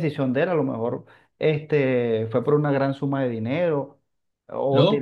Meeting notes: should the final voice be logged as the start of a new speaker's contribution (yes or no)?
yes